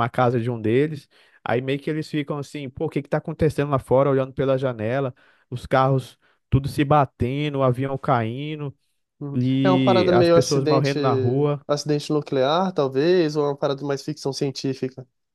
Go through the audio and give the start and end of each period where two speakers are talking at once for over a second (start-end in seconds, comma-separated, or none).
9.3-11.0